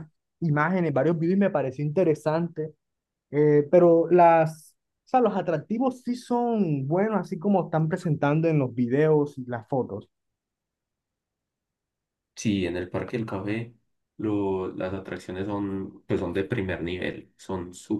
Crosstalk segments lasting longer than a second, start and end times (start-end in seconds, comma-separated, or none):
none